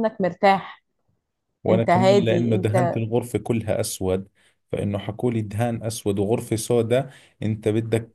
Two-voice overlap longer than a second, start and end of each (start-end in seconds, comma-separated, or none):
1.7-3.0